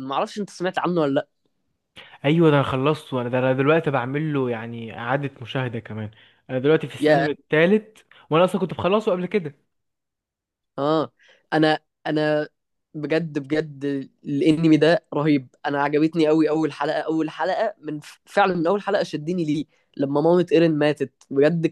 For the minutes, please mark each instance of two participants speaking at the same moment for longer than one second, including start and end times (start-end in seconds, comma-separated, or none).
none